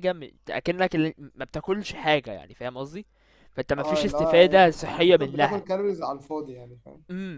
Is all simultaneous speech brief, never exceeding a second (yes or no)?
no